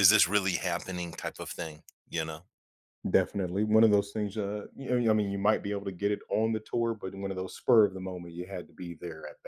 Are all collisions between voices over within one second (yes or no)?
yes